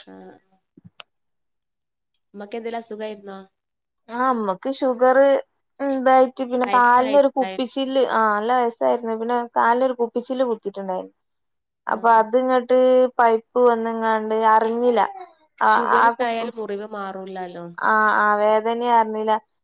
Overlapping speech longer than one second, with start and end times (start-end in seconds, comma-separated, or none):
6.7-7.9